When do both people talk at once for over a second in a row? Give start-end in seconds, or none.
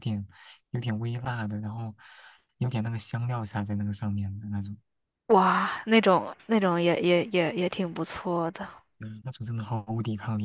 none